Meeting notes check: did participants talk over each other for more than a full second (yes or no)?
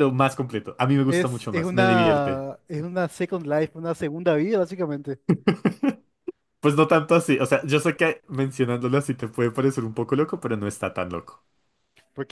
yes